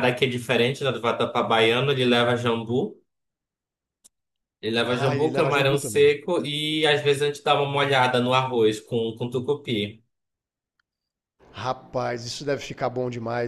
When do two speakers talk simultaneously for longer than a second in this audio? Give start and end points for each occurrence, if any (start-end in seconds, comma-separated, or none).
4.9-6.2